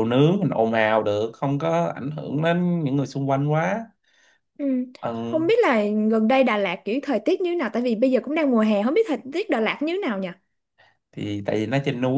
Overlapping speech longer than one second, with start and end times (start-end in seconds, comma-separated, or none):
none